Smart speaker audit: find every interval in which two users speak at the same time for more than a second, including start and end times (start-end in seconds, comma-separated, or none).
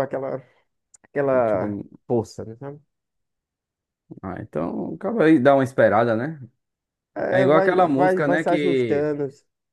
7.3-9.1